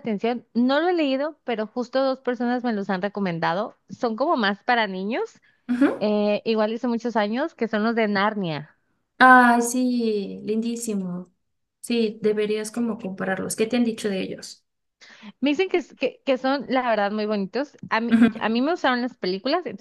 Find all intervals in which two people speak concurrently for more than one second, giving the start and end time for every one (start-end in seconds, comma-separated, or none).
none